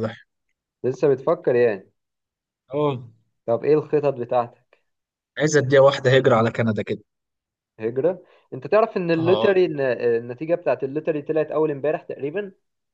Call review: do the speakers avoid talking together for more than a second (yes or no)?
yes